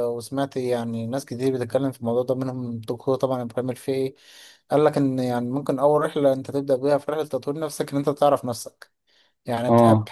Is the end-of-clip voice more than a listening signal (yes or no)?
no